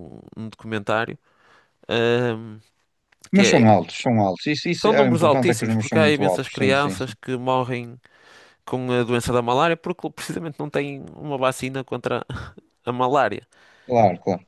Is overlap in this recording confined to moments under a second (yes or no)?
no